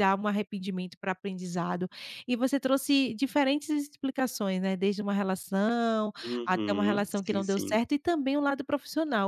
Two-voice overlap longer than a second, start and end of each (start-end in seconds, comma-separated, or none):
6.2-7.8